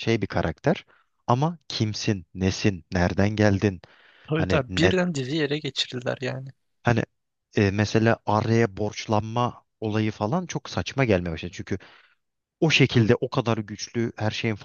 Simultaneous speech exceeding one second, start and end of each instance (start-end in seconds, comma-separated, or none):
none